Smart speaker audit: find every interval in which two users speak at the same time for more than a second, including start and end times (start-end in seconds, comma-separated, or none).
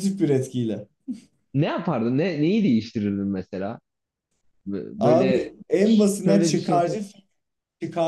5.0-7.0